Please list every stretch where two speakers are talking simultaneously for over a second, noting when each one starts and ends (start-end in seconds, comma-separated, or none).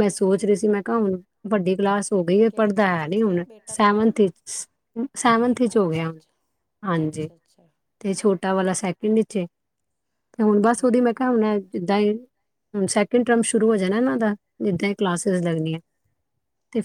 2.5-4.1